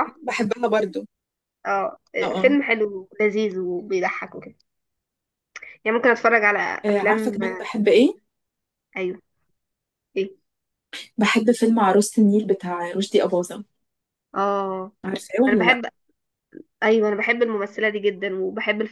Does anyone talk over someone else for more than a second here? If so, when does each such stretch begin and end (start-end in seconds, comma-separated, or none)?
none